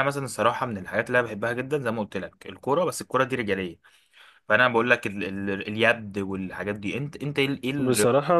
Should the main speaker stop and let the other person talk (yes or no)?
yes